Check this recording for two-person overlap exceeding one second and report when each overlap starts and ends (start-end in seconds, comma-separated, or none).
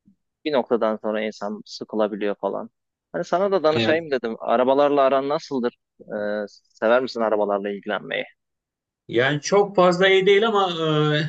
none